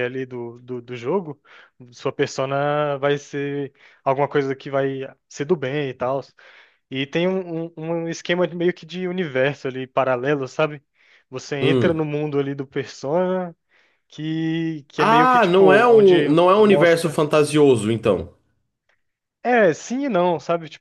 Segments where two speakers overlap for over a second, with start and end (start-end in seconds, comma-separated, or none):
14.9-17.2